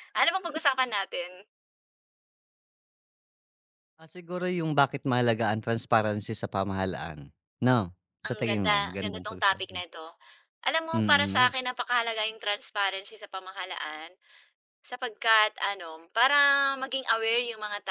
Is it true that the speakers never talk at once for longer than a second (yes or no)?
no